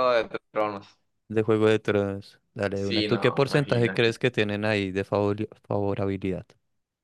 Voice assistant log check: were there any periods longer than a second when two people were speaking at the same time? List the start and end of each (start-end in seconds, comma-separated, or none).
2.7-4.2